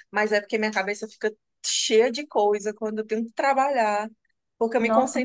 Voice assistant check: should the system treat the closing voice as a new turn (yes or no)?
no